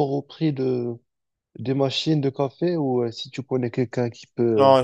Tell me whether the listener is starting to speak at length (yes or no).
yes